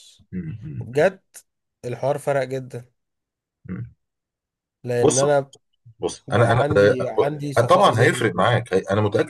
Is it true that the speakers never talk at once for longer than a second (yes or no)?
yes